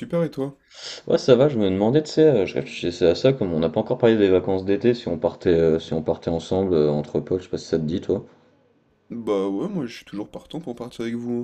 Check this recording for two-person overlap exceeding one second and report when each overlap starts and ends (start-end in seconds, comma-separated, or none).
none